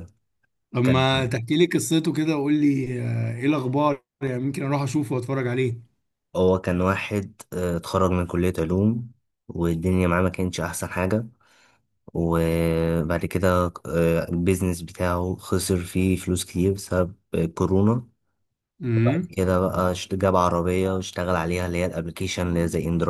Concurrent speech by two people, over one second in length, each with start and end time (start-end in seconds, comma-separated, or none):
none